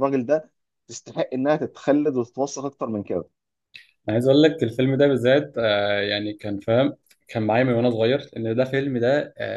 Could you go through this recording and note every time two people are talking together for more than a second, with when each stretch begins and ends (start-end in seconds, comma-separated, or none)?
none